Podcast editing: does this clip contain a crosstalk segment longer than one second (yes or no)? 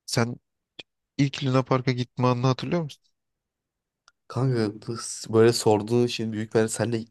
no